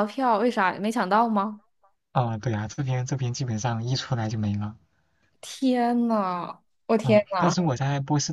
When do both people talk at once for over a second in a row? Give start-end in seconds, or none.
none